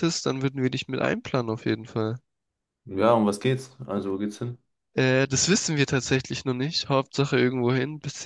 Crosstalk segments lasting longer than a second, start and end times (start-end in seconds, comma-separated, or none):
none